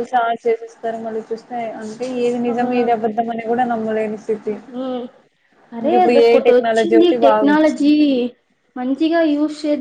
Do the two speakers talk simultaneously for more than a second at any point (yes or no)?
yes